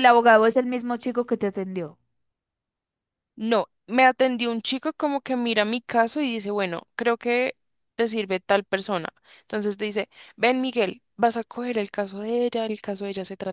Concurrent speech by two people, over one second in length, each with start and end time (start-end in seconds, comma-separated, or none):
none